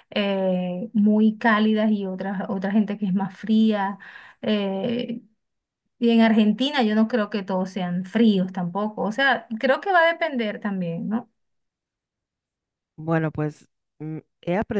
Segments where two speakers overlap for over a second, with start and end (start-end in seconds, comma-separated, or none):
none